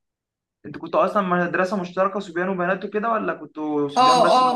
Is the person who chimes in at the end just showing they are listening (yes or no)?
no